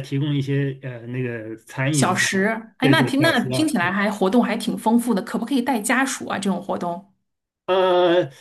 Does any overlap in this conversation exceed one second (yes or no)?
yes